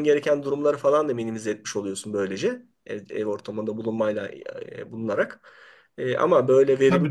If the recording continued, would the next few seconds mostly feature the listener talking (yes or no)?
yes